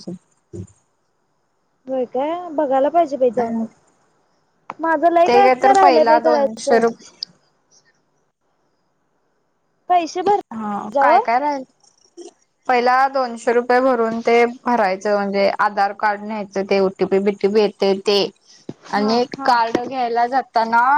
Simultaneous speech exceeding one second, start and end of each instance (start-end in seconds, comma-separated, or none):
5.3-6.8